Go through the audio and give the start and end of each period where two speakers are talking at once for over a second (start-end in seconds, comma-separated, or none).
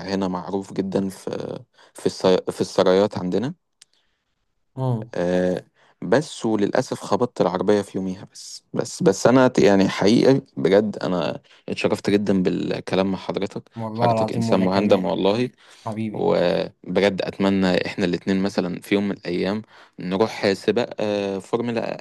13.8-15.1